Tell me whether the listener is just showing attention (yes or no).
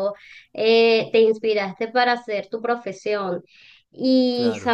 yes